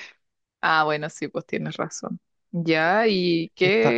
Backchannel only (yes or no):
yes